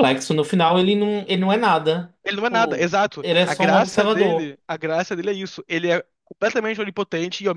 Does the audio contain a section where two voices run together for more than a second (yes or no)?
yes